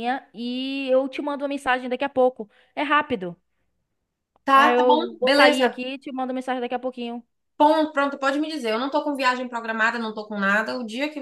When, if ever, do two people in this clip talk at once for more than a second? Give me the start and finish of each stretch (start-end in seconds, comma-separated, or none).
4.5-5.8